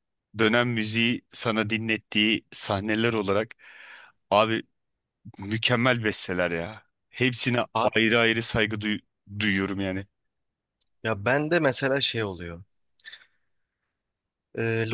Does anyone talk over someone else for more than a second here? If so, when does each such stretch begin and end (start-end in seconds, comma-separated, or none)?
none